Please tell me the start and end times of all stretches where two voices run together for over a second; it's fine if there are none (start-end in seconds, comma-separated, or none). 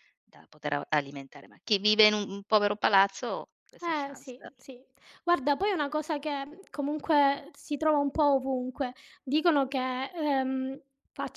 none